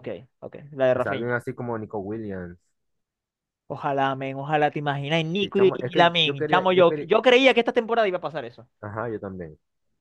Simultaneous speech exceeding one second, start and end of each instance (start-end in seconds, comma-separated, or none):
5.4-7.1